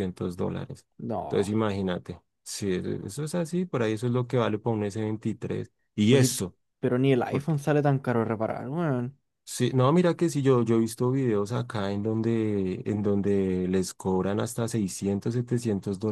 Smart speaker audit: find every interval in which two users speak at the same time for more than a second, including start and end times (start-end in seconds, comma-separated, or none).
none